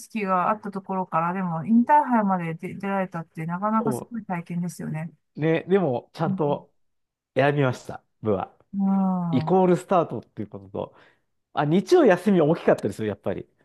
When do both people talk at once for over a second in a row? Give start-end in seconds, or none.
none